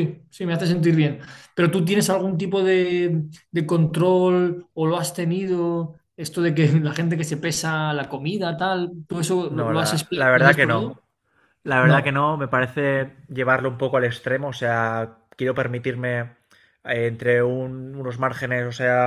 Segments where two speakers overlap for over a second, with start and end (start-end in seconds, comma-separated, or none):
9.5-11.0